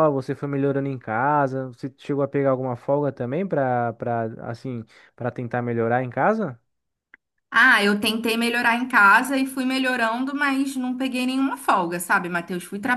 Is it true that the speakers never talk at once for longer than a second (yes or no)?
yes